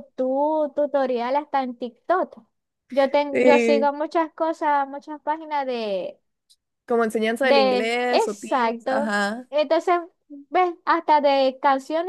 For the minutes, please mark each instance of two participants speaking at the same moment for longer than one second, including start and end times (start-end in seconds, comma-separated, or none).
7.4-9.5